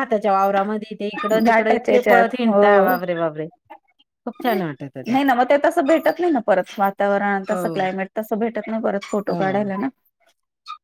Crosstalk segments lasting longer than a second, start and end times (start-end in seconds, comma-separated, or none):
1.5-2.9